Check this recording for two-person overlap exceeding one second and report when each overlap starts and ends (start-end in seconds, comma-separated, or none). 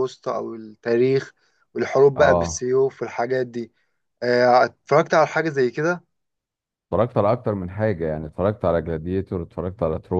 none